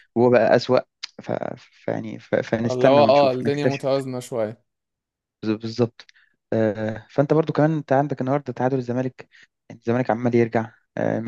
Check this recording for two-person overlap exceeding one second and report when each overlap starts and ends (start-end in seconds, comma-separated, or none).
2.6-3.9